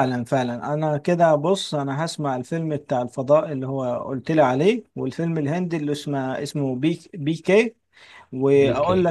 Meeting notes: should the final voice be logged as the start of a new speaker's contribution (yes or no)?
no